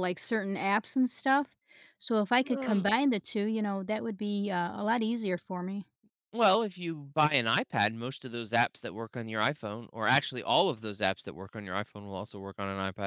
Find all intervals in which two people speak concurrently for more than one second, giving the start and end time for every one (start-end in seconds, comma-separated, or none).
none